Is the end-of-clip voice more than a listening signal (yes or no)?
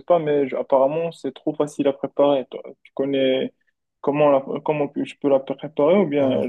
yes